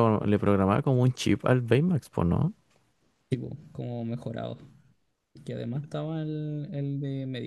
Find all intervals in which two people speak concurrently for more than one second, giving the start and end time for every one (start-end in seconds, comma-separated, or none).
none